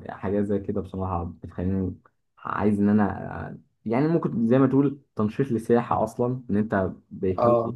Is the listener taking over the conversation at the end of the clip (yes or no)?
no